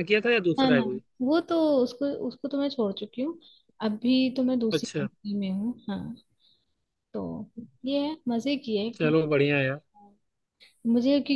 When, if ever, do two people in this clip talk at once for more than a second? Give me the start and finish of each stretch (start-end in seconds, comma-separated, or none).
none